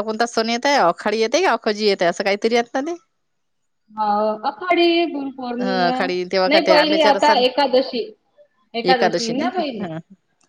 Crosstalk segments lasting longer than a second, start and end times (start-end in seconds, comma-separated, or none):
5.6-7.4